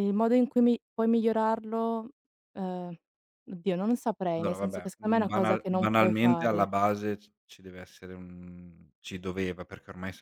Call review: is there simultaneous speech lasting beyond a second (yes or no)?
yes